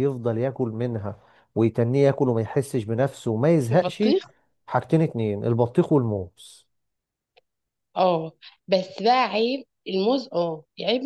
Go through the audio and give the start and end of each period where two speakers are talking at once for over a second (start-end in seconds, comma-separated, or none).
none